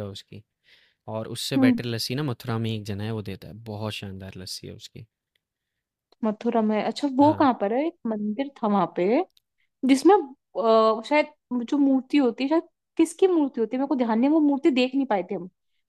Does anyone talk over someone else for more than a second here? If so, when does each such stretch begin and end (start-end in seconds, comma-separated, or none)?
none